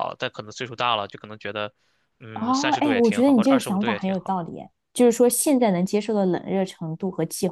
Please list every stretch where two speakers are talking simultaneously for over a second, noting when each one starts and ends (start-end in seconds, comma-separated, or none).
2.3-4.4